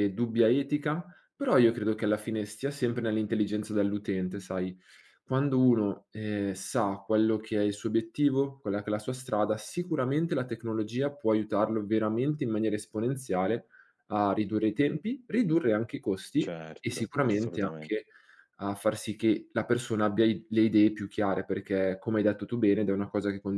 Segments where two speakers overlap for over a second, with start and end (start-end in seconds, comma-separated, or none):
16.4-18.0